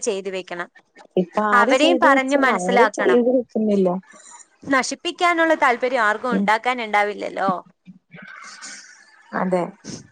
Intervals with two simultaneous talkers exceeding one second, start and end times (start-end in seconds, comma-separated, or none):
1.6-3.2